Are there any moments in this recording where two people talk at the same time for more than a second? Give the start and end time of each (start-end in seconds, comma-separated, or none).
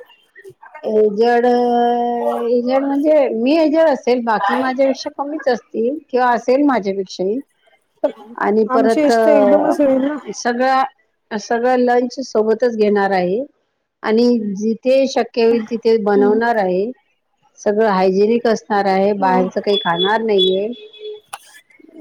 none